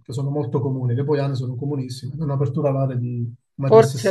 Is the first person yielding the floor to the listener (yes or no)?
yes